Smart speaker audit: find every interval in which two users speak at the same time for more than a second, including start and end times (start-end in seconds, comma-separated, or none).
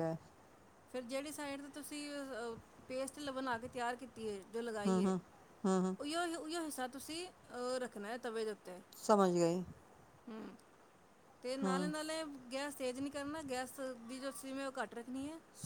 none